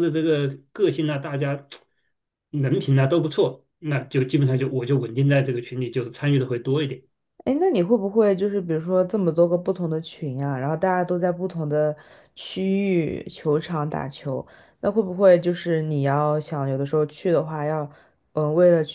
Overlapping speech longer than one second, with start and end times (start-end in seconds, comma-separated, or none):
none